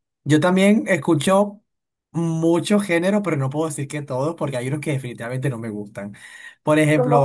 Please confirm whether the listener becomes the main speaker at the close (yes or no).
no